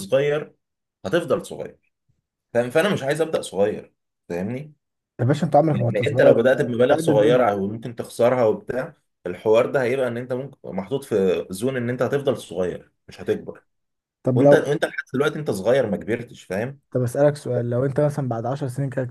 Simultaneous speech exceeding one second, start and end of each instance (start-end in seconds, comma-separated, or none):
5.7-7.5